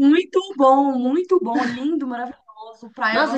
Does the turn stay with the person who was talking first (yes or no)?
no